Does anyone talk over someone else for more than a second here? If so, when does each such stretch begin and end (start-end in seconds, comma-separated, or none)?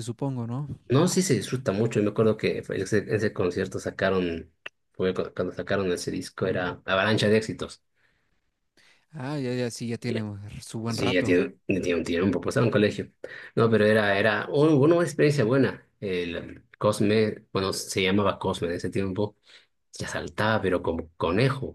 none